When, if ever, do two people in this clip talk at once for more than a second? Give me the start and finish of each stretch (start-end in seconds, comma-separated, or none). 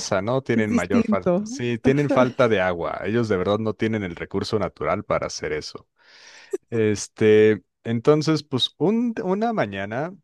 0.5-2.2